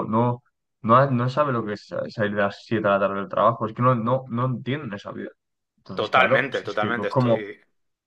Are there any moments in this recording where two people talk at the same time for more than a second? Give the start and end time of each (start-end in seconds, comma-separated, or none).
5.9-7.5